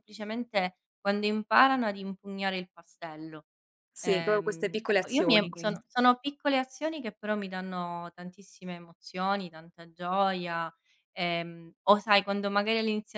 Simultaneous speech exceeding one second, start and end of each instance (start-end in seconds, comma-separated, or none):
4.0-5.8